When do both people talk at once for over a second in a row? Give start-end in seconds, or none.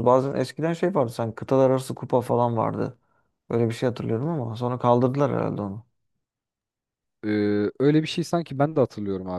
none